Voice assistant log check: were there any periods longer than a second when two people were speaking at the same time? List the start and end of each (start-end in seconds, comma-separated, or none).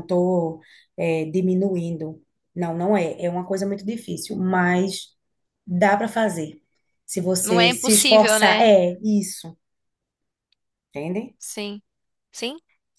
7.4-8.7